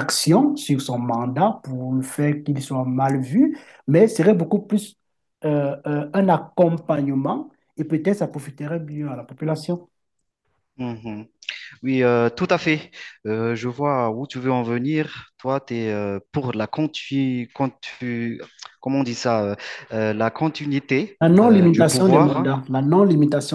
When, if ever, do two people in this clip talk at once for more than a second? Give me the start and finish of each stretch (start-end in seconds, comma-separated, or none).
21.2-22.5